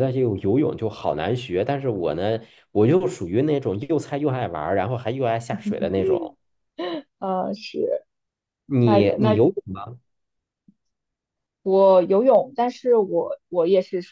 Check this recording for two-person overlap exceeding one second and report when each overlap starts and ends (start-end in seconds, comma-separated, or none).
none